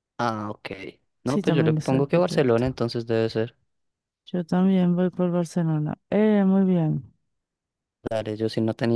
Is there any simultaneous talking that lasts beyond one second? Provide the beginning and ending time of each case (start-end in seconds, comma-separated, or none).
1.3-2.8